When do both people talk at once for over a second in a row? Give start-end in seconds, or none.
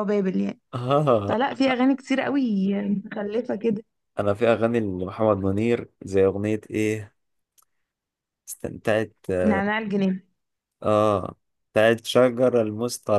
none